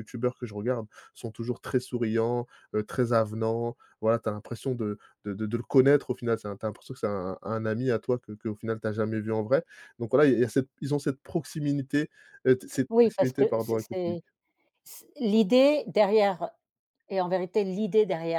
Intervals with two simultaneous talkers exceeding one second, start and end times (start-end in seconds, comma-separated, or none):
12.9-14.2